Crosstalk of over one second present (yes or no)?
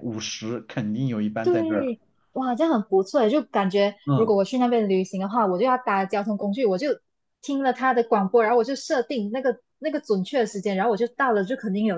no